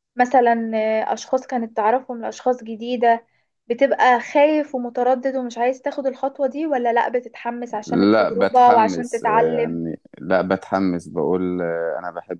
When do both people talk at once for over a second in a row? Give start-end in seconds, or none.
7.8-9.8